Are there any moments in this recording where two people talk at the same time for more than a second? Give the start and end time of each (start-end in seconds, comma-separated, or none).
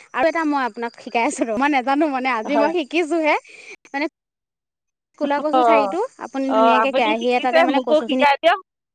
6.6-8.3